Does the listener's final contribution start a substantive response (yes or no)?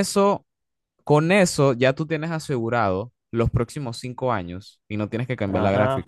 yes